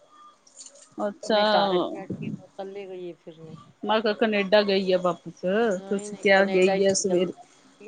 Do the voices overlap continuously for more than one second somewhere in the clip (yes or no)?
yes